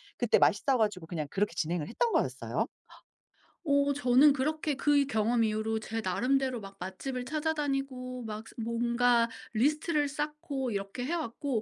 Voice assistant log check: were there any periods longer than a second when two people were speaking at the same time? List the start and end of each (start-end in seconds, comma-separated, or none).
none